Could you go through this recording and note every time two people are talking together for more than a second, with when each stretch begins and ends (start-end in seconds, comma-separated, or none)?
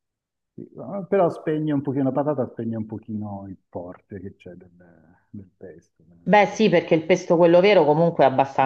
none